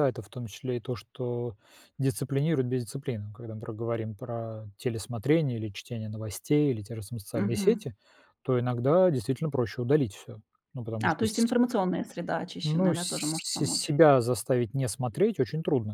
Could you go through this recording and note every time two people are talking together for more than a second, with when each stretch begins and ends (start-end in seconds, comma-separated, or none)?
12.6-13.9